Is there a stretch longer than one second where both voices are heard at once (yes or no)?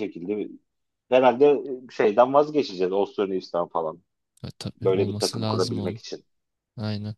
yes